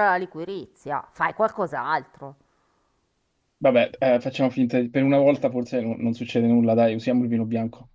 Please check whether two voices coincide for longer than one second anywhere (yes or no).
no